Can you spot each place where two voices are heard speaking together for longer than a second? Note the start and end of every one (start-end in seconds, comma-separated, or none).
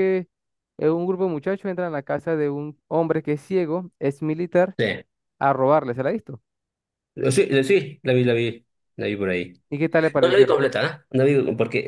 none